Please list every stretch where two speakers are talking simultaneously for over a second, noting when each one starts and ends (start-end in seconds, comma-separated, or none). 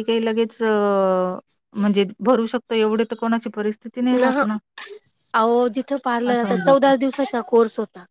none